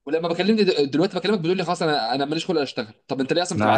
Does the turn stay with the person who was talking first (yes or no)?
no